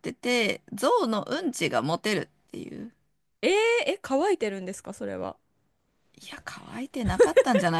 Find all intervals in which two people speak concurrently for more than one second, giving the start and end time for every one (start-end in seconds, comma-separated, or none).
none